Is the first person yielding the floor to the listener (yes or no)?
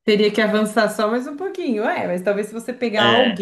no